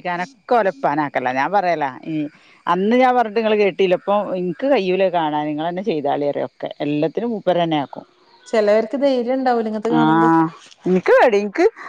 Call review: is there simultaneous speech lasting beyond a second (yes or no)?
no